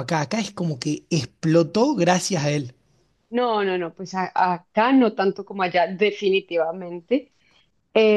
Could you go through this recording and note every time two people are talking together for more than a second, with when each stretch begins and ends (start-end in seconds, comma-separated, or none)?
none